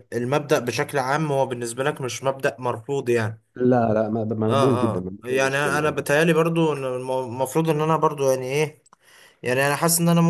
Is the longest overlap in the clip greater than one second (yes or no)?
yes